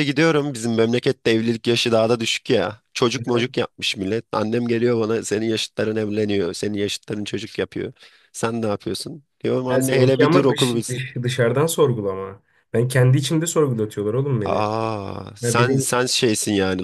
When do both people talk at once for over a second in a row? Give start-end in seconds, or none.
9.7-11.0